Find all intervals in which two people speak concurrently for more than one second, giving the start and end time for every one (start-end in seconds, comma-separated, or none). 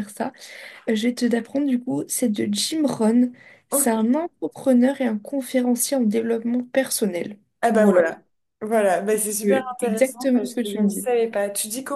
9.4-11.1